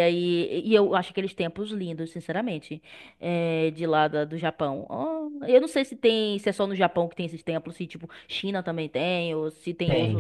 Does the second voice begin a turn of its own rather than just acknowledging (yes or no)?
yes